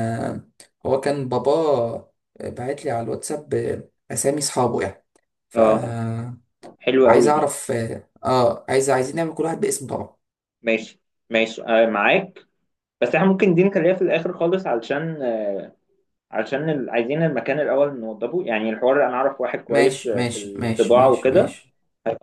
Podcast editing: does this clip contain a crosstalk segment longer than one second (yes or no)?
yes